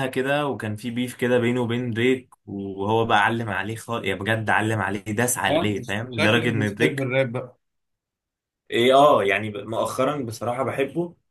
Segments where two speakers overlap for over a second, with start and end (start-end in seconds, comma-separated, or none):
5.5-7.1